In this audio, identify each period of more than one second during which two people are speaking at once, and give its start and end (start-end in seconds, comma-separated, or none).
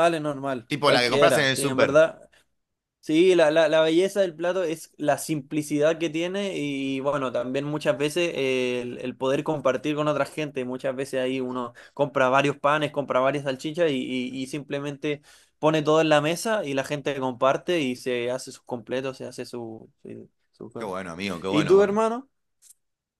0.7-2.0